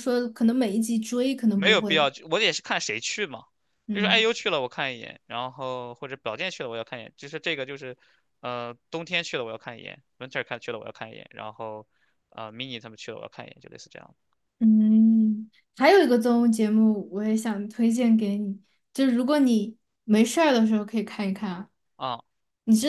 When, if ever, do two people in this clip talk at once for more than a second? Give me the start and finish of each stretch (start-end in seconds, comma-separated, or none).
none